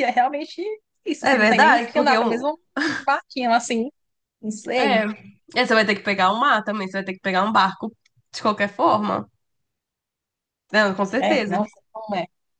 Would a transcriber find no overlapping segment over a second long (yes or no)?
no